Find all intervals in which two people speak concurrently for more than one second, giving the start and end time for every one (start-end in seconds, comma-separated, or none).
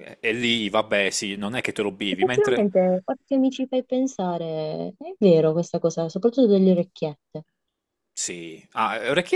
none